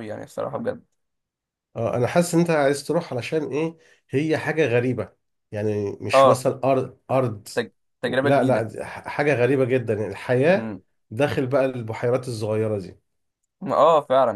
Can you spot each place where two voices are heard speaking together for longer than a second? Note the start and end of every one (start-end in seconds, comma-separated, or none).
none